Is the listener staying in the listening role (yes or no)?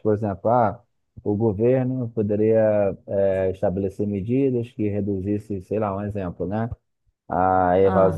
yes